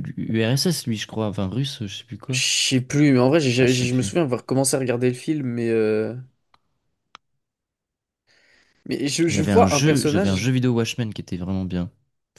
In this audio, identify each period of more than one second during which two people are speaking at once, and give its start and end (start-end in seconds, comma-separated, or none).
9.3-10.5